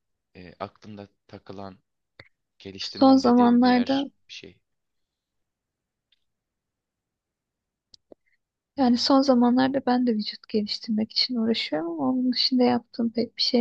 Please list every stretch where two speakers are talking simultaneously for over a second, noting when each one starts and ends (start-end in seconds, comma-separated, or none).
2.8-4.1